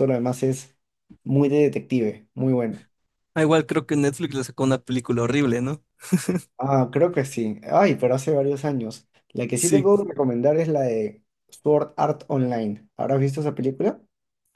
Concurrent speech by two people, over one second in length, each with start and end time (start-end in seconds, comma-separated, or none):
none